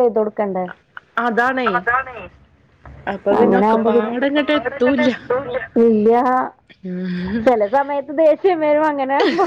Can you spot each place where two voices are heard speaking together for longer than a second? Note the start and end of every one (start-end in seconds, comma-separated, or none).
3.4-5.1